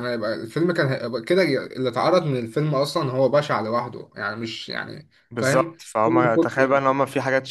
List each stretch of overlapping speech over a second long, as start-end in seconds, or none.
5.3-6.7